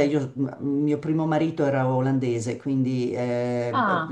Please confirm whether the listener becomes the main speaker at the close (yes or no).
no